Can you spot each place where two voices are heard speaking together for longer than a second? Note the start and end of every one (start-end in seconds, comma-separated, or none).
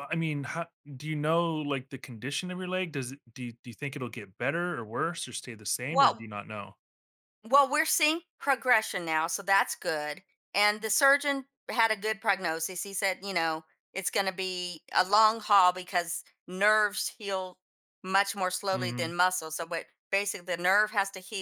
none